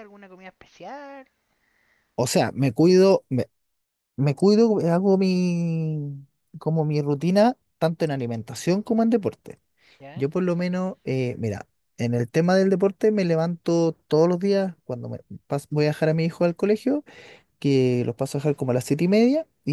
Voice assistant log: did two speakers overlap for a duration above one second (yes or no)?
no